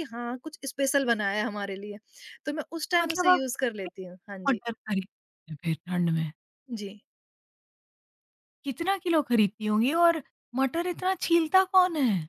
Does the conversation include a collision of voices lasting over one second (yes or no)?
yes